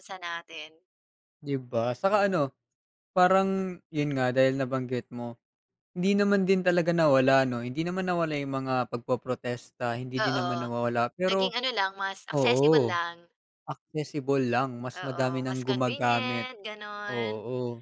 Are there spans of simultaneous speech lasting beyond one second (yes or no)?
yes